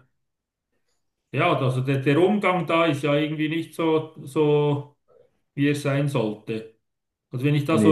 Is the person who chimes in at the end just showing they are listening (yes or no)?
yes